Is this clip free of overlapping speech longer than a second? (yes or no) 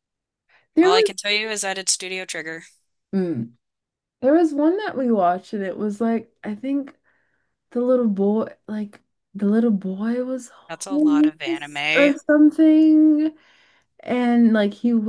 no